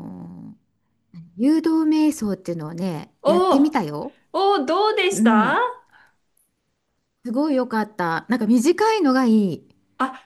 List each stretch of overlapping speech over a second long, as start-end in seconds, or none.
none